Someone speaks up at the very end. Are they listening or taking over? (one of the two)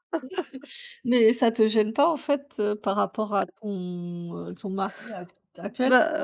taking over